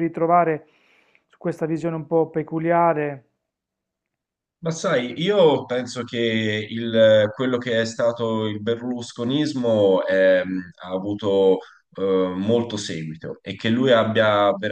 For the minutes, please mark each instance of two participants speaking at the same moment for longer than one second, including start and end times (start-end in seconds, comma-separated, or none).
none